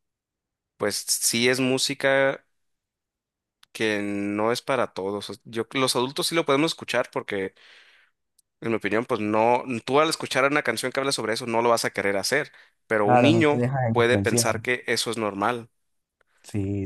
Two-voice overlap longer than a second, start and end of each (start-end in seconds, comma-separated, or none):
13.0-14.4